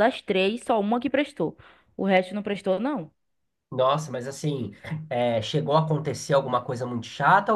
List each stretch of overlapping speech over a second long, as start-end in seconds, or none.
none